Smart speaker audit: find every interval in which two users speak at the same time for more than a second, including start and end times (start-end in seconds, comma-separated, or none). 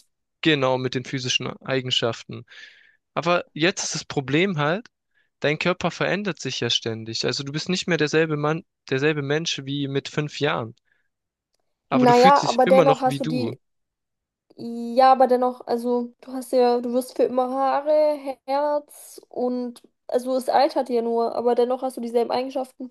11.9-13.5